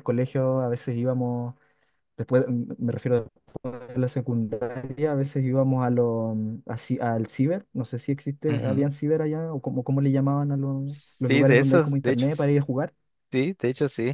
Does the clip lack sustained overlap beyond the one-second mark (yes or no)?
no